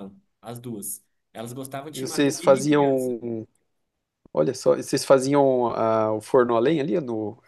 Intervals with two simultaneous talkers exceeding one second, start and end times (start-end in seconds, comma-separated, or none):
1.9-3.2